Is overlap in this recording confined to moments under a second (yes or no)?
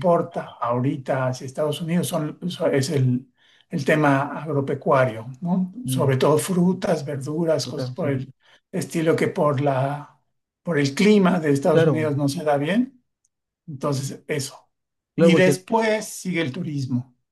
yes